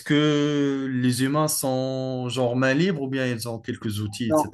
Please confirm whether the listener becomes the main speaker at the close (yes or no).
yes